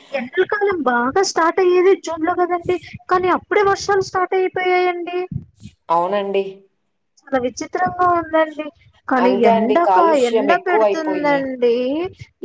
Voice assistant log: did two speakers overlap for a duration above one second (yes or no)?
yes